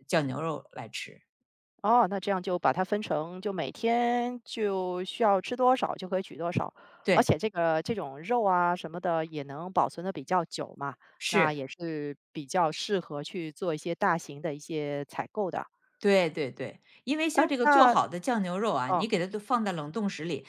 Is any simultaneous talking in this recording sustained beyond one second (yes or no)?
no